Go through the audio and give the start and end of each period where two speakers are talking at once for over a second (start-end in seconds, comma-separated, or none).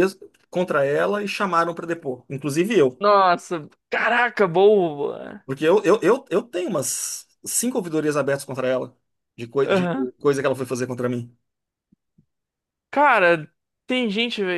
none